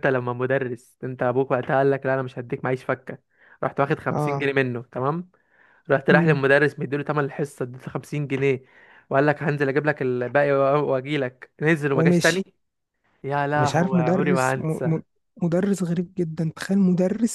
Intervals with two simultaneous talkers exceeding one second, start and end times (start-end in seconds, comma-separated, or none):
13.6-15.0